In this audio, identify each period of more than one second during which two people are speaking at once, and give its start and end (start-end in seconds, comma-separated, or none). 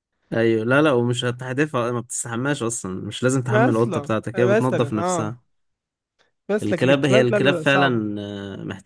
3.5-5.4, 6.6-8.0